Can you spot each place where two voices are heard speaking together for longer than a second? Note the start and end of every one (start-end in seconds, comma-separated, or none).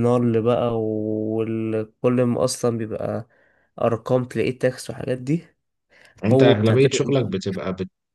6.3-7.6